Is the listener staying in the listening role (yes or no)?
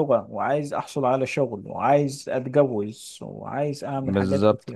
no